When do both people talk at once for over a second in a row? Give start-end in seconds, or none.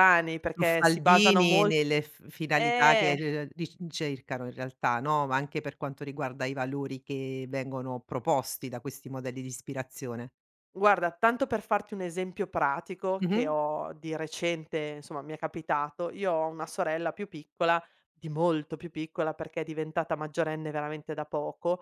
0.5-1.7